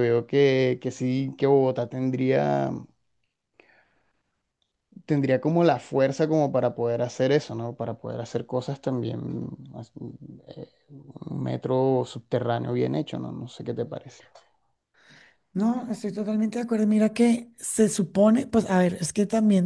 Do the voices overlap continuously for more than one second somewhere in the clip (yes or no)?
no